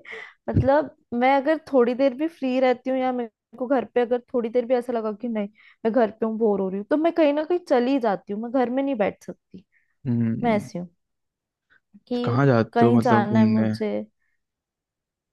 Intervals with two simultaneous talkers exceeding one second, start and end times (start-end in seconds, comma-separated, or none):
12.2-13.7